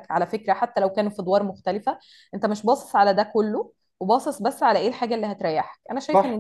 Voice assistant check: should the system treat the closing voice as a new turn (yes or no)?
yes